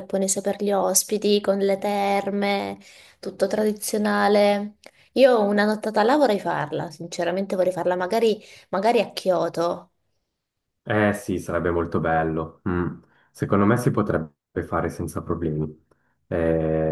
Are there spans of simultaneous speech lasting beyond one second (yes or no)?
no